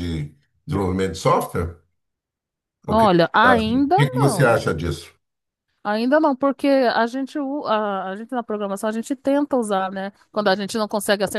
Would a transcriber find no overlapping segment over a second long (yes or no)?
no